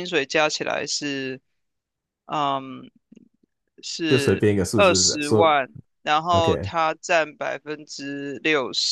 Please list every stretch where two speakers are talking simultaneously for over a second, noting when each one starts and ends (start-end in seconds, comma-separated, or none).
4.1-5.6